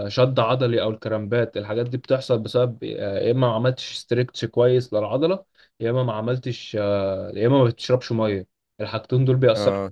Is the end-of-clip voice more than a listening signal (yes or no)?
no